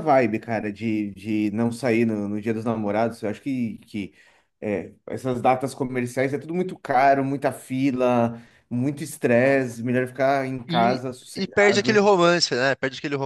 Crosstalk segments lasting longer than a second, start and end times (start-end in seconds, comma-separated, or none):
10.7-12.1